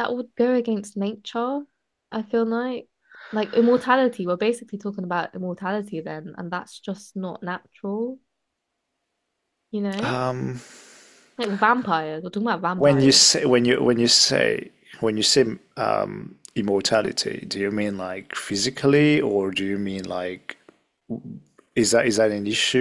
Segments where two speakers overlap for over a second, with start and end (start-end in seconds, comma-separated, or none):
none